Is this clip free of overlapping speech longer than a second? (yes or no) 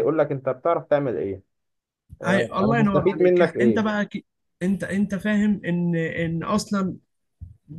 no